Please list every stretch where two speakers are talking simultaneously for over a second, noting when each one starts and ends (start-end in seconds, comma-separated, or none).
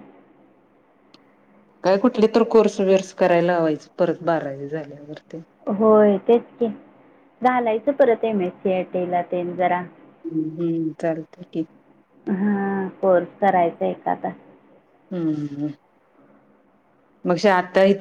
none